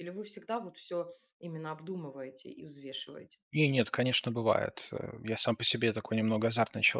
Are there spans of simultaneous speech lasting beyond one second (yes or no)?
no